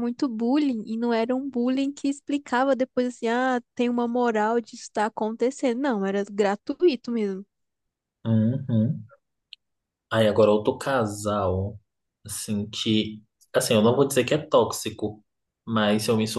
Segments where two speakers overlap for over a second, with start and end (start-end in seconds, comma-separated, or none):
none